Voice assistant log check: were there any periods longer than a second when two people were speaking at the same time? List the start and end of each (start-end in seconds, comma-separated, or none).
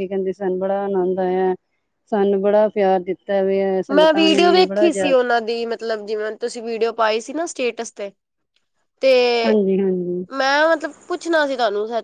3.9-5.3